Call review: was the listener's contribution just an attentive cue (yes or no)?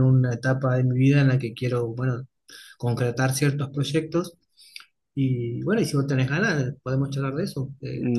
no